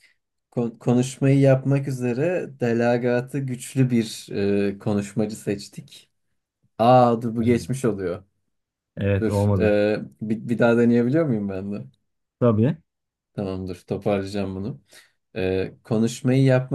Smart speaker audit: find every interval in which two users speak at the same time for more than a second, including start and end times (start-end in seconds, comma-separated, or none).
none